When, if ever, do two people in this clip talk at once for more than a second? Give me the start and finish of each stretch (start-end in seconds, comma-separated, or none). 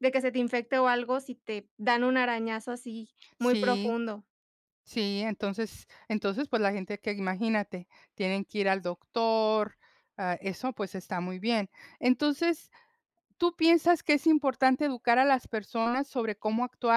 none